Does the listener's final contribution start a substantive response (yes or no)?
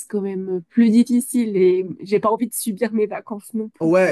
yes